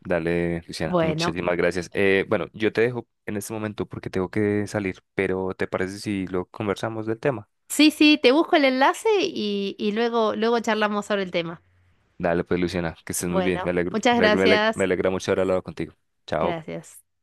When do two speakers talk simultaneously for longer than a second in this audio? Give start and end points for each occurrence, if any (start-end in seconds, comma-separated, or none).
13.3-14.8